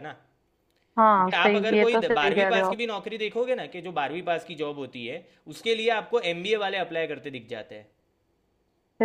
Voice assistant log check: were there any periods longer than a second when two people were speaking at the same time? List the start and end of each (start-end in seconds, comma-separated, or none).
1.1-2.8